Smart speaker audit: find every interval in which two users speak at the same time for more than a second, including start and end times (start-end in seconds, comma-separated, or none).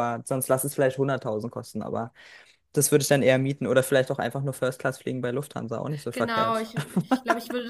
none